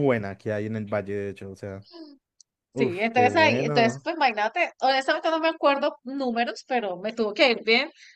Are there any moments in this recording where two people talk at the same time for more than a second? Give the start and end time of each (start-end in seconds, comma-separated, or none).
2.8-4.1